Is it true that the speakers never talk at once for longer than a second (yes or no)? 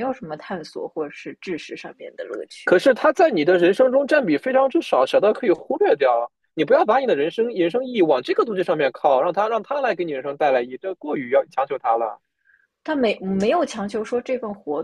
yes